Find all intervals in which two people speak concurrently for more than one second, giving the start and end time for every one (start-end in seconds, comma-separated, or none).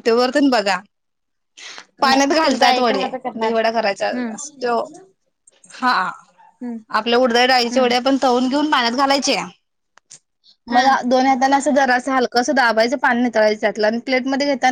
2.1-3.5